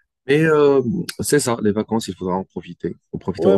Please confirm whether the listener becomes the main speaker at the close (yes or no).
yes